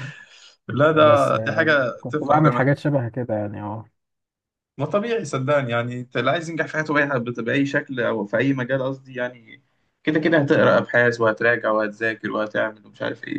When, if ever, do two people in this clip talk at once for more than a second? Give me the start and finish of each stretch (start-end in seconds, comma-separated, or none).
0.9-2.4